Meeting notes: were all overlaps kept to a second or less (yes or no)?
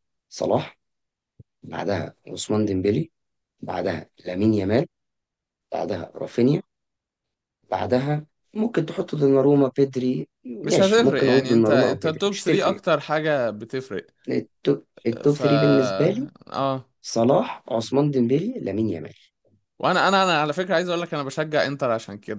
no